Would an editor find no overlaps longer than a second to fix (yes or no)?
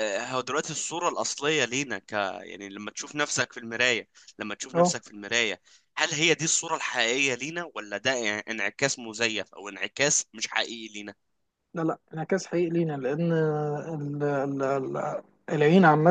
yes